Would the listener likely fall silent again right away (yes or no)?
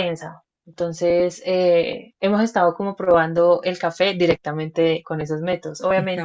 yes